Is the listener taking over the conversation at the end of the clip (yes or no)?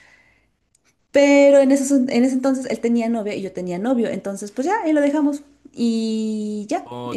yes